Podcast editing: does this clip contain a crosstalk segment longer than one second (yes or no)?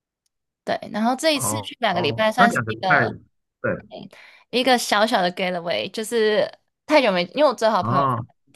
yes